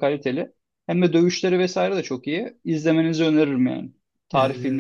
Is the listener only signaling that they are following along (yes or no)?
no